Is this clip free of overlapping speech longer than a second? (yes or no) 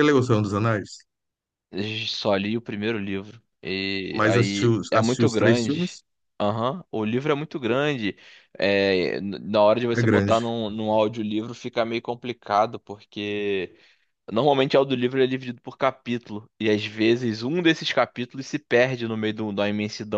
no